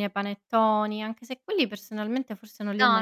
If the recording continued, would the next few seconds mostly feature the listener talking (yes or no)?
yes